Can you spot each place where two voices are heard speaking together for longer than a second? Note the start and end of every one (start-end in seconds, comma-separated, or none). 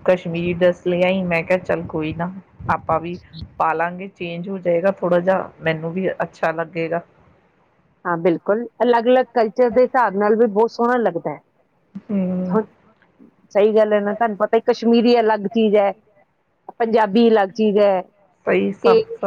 none